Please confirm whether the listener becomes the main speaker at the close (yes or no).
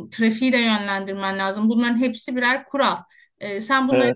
no